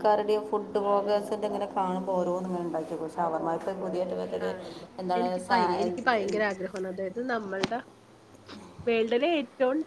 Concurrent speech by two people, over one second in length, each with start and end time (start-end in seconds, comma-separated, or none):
none